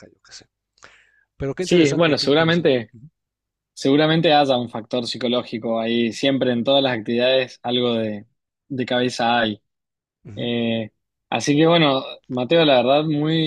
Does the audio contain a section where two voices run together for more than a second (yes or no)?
yes